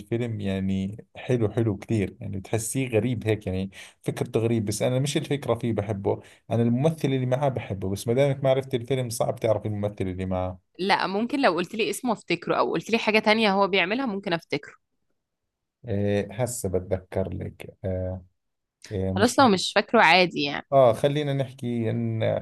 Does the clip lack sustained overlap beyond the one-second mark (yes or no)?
yes